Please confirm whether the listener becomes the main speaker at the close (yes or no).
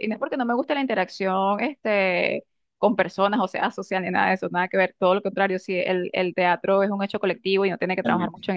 no